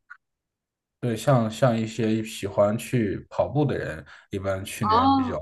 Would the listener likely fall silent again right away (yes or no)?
yes